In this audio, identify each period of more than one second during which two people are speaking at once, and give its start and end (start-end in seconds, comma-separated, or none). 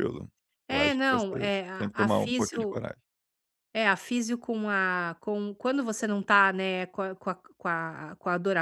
0.7-2.8